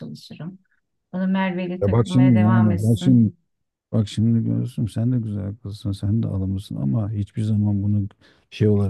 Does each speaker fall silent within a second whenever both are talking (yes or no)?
no